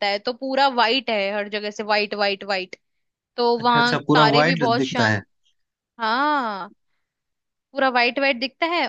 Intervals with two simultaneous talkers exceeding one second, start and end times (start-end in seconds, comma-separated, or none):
3.6-5.2